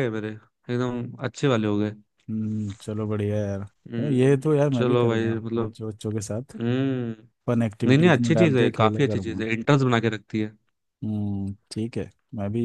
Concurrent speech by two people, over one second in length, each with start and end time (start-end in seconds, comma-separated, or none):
3.9-5.7, 7.9-9.5